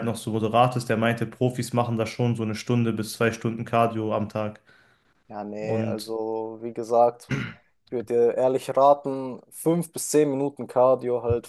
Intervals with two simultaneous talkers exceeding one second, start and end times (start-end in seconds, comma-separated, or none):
none